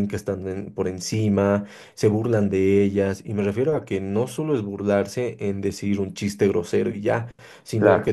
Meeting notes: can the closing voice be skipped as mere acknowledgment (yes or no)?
yes